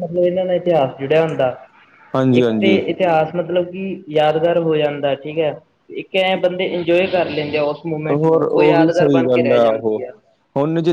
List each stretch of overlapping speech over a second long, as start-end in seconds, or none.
8.1-10.0